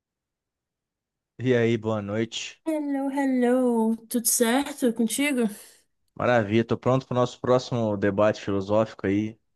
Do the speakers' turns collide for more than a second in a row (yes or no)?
no